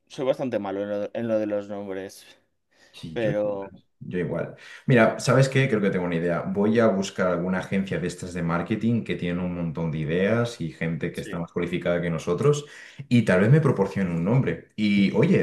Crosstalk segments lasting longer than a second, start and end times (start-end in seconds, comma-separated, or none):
none